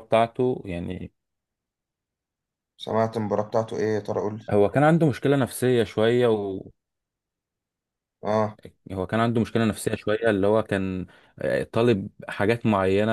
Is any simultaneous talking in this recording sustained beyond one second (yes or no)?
no